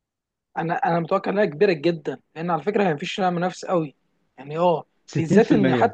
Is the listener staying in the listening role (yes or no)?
yes